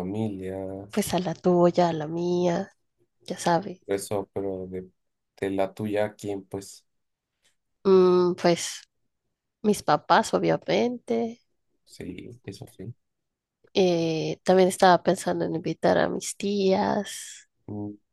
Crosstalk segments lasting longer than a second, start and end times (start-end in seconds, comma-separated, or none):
none